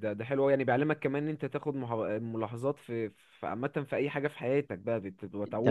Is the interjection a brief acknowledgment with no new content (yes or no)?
no